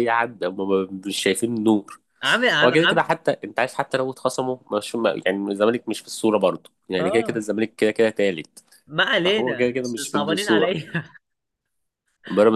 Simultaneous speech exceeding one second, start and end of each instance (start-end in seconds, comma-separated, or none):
9.2-10.8